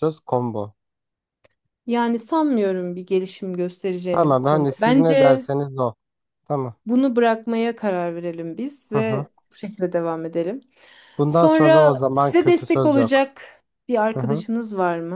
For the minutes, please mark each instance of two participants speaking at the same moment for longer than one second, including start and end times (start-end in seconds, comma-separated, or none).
4.1-5.5, 11.3-13.3